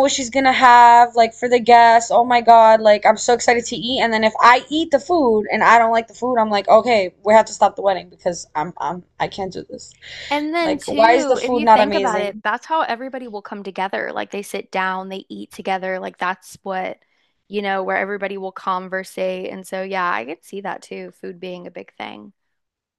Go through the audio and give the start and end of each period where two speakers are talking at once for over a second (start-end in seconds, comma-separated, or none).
10.6-12.4